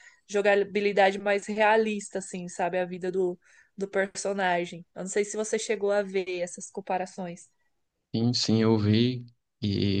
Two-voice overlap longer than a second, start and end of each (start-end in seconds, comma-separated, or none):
none